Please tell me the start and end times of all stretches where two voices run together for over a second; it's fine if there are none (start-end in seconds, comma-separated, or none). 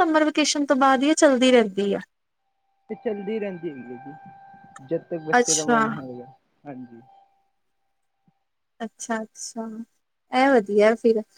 none